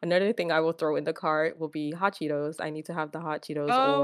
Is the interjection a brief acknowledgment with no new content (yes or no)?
no